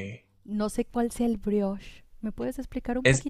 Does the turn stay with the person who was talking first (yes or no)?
no